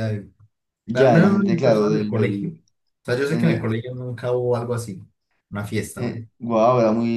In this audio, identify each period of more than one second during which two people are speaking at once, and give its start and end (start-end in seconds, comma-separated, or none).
0.9-2.5